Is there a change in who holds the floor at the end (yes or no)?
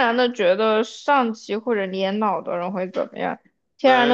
no